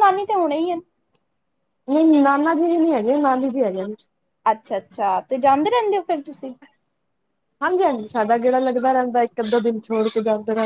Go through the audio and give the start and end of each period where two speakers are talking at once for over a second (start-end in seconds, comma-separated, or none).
none